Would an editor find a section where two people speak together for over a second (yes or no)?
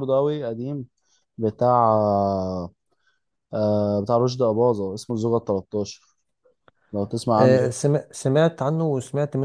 no